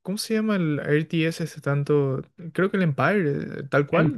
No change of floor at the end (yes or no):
no